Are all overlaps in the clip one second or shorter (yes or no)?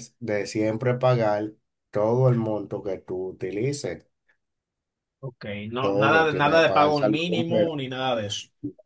no